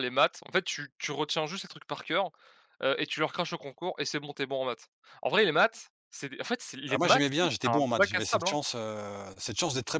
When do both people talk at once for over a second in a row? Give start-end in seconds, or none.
6.9-8.6